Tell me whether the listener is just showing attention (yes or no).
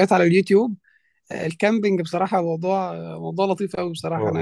yes